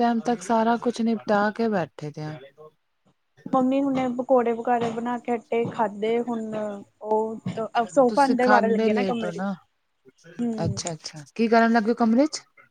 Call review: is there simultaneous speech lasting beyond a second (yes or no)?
yes